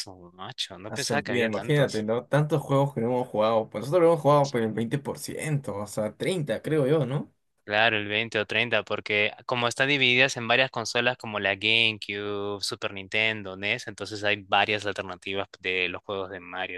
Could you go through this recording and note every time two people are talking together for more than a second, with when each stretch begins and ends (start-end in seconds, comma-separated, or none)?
0.9-2.1